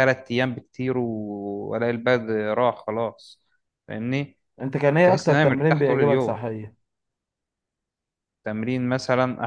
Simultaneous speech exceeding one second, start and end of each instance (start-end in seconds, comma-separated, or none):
5.0-6.4